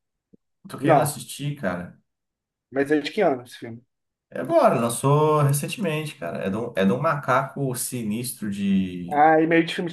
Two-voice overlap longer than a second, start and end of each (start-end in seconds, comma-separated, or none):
none